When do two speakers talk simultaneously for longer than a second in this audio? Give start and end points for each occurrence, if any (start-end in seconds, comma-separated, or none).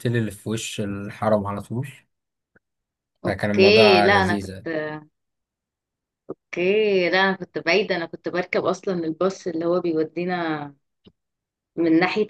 3.3-4.7